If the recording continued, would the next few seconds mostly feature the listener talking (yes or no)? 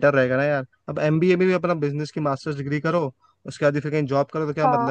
no